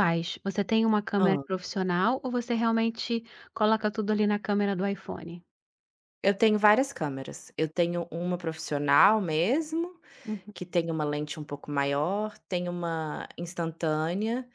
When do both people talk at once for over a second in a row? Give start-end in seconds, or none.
none